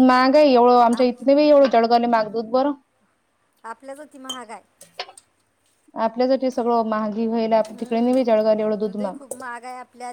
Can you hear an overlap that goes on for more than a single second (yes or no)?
yes